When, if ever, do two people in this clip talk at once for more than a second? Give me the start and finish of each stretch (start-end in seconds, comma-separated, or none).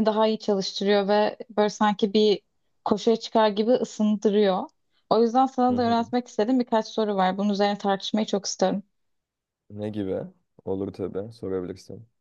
none